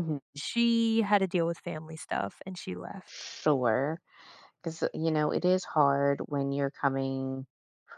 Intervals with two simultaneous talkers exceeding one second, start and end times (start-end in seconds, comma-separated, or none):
none